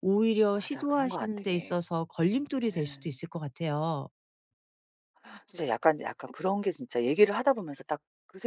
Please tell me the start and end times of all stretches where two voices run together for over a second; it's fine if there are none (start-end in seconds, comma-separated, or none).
0.5-1.8